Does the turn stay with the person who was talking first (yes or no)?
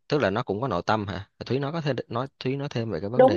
no